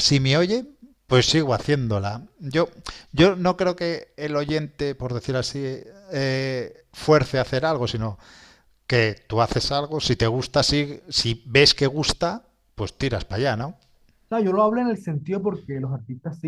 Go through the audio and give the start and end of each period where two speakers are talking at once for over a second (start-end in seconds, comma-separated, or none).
none